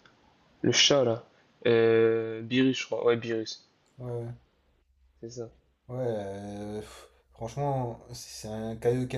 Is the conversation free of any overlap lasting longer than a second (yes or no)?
yes